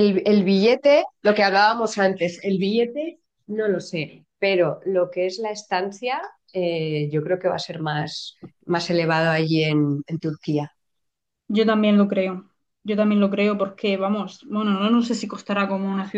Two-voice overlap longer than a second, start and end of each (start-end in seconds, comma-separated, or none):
none